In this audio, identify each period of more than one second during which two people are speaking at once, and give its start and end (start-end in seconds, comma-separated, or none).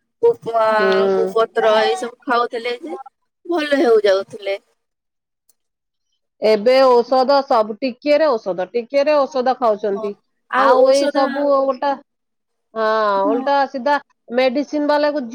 none